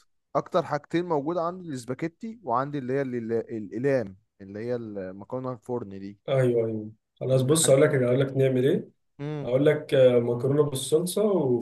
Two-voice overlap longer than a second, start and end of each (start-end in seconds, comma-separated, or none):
none